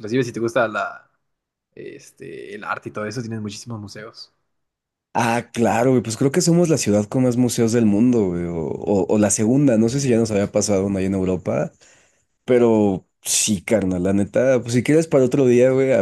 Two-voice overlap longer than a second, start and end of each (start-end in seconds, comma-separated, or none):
none